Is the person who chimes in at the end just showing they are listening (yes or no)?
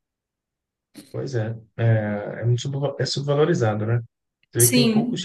yes